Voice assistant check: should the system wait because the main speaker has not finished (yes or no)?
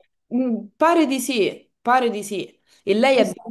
yes